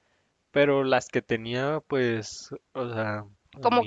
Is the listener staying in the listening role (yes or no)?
no